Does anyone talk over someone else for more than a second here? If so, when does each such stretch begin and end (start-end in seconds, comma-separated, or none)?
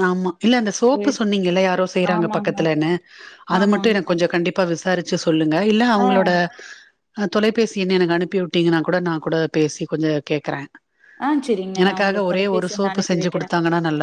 11.8-13.5